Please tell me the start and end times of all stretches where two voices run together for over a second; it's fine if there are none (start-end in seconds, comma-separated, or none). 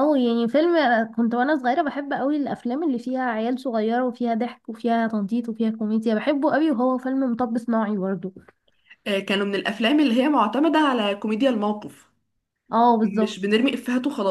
none